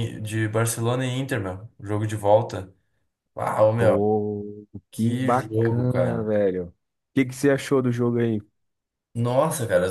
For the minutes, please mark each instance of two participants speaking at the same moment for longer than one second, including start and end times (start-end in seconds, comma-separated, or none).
4.9-6.3